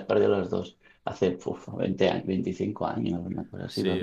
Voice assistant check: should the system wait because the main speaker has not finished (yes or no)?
no